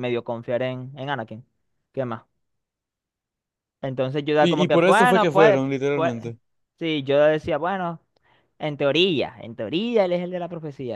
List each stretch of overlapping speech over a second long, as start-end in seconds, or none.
4.4-6.1